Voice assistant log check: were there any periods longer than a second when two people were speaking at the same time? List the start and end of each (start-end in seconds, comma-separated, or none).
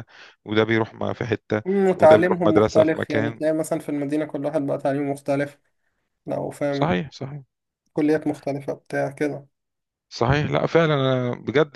1.7-3.4